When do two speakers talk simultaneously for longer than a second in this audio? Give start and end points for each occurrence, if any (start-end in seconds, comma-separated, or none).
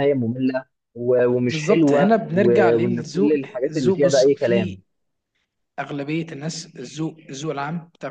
1.5-4.8